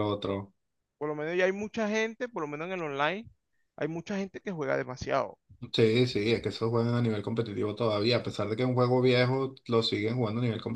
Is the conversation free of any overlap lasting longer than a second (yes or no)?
yes